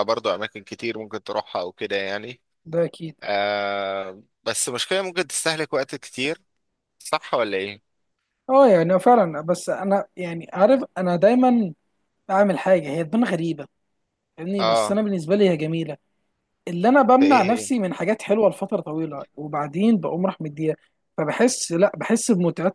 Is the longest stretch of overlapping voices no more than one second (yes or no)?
yes